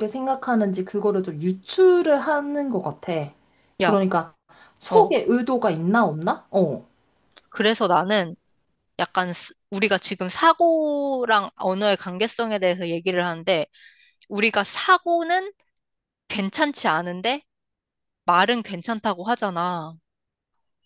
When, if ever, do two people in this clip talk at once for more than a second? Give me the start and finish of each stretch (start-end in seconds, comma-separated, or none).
none